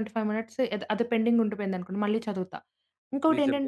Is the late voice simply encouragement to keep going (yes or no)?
yes